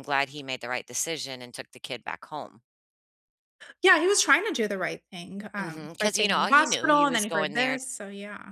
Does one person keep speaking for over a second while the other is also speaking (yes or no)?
yes